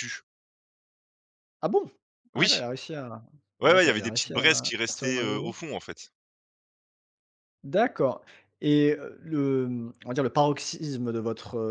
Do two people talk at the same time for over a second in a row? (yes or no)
yes